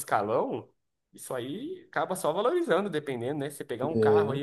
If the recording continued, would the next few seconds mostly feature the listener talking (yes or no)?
no